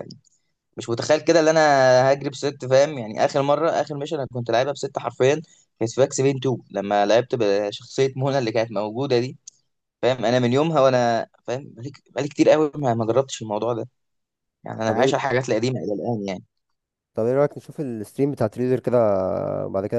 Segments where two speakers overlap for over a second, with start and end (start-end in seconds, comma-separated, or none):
none